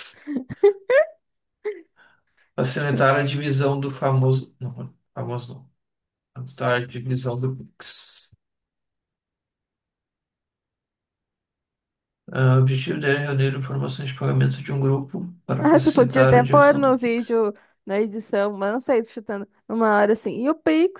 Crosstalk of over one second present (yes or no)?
yes